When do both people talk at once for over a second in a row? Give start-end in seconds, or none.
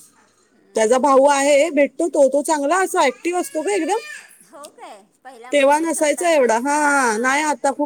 5.5-7.3